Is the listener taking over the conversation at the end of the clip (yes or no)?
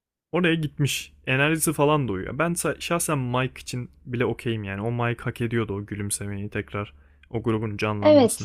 yes